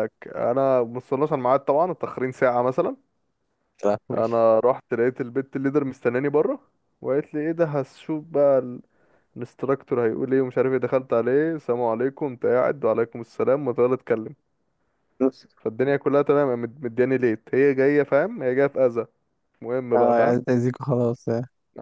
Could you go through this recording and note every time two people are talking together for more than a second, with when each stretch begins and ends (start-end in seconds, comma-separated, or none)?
none